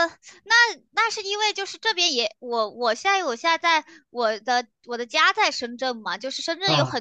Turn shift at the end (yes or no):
no